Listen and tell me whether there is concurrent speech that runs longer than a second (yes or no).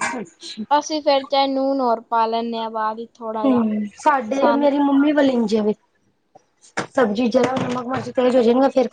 no